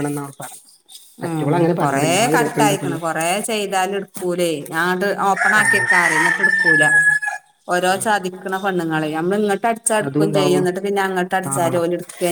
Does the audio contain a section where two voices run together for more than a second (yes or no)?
yes